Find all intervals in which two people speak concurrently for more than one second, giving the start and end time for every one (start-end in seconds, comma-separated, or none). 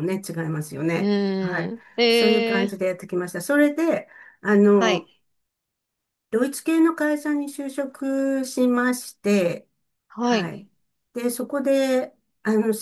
1.0-2.7